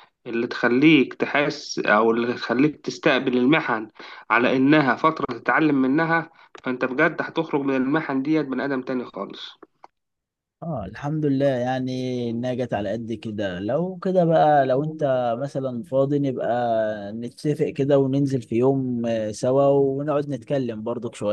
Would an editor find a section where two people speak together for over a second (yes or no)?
no